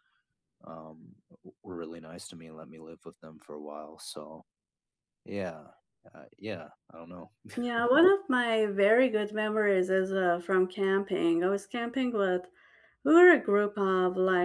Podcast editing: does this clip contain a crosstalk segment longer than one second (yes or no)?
no